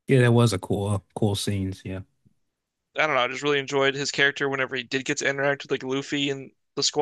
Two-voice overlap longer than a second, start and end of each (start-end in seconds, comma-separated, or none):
none